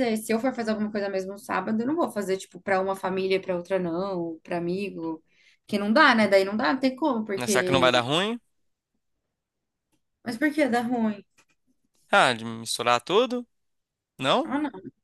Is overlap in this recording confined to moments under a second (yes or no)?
yes